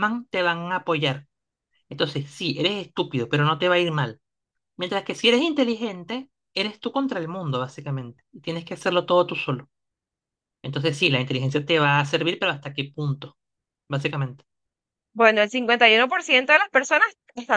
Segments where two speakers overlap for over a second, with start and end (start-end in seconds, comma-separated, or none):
none